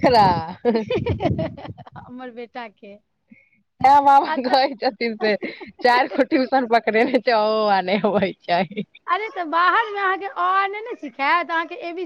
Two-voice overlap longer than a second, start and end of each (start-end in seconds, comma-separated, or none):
none